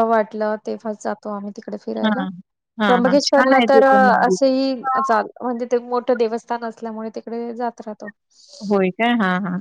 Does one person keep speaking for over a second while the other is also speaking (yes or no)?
yes